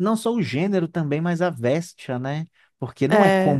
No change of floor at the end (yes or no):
yes